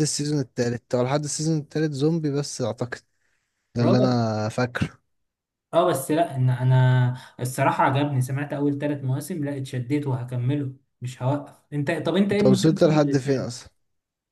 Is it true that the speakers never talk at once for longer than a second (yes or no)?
no